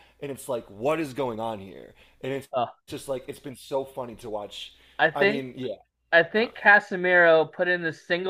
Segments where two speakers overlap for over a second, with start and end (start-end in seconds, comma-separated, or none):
none